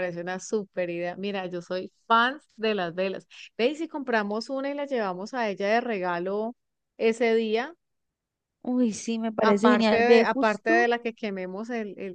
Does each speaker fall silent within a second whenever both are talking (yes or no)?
no